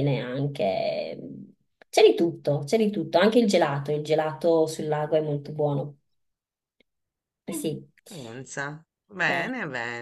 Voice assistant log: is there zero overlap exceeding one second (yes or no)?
yes